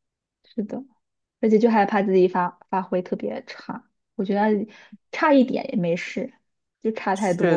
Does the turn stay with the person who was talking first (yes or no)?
no